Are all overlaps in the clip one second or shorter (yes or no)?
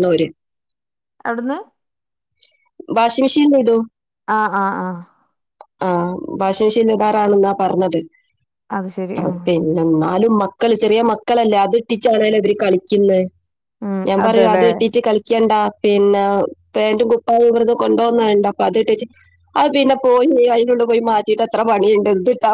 yes